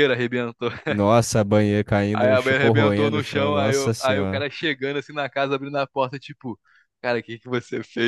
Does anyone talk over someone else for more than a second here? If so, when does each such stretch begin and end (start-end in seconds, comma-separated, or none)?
2.1-4.4